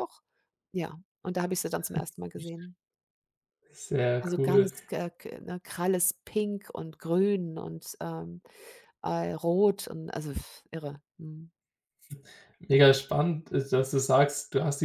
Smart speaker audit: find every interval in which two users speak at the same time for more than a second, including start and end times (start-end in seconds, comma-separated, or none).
none